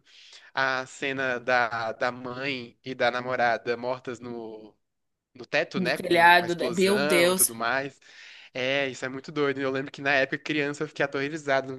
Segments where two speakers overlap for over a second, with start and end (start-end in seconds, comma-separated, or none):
5.7-7.5